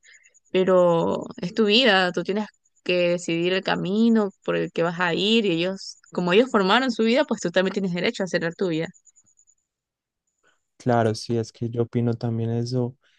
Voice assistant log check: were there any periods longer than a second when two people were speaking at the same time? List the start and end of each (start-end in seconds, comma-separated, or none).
none